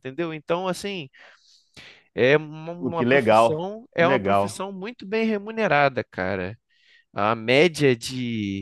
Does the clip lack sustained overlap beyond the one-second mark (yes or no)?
no